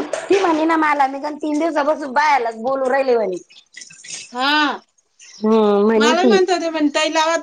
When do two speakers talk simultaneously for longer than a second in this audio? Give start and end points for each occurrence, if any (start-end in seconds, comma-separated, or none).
none